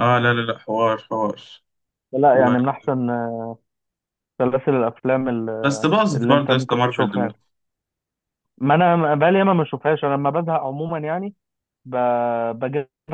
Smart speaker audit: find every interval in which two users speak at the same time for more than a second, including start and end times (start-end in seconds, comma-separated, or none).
5.6-7.4